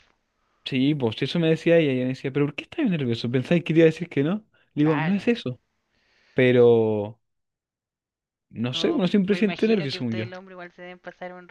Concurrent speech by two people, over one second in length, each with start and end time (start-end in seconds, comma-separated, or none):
8.7-10.3